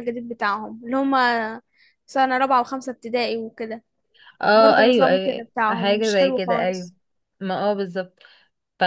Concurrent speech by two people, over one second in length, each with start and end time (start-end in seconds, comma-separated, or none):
4.5-6.9